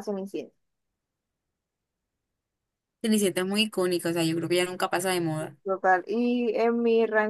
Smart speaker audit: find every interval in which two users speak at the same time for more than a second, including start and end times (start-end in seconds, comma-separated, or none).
none